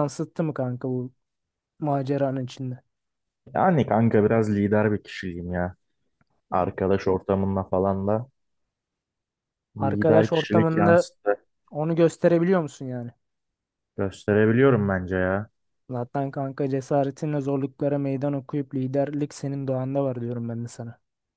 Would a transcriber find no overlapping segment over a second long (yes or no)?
no